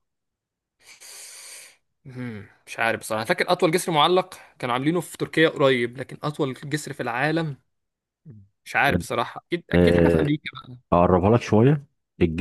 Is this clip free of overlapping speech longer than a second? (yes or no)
yes